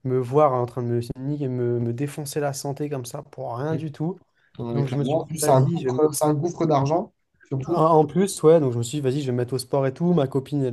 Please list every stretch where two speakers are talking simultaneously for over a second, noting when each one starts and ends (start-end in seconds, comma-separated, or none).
4.7-6.0